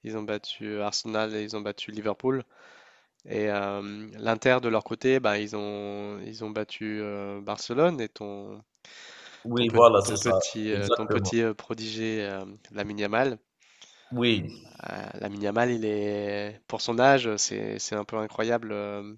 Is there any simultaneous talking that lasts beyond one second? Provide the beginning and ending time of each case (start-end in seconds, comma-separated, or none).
9.6-11.3